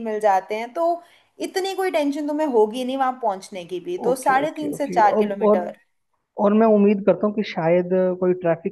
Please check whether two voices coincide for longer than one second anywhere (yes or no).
yes